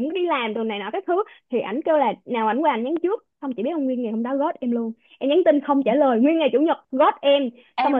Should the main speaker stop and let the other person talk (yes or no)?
yes